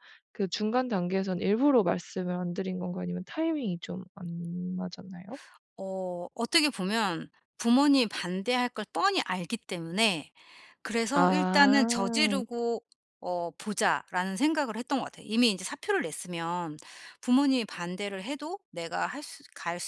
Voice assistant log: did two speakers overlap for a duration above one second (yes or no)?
yes